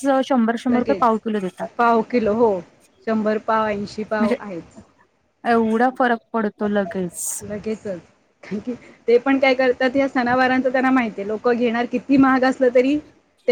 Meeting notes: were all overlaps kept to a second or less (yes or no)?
yes